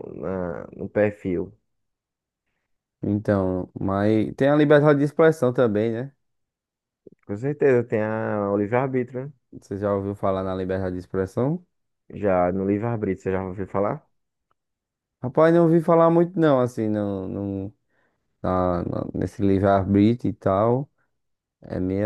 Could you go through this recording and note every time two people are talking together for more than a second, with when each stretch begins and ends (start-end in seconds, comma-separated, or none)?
none